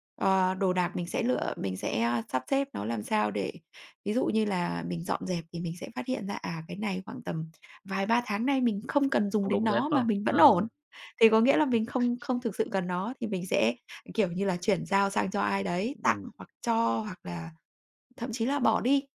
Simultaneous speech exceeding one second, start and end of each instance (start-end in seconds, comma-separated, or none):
9.4-10.7